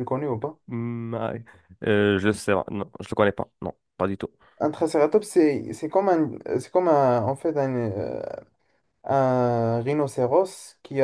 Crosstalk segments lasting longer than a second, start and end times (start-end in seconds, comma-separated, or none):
none